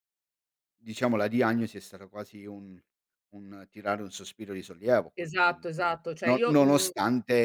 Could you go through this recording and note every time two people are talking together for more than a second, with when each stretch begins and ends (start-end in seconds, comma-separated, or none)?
5.2-6.9